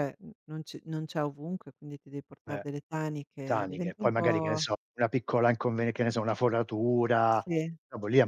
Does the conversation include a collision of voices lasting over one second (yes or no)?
yes